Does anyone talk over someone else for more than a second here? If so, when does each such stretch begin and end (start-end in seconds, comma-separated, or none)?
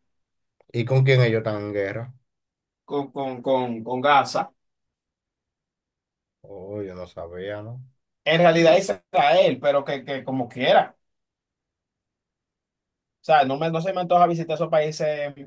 none